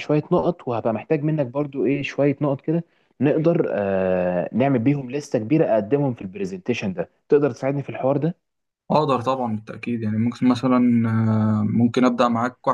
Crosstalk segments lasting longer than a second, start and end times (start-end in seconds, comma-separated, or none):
none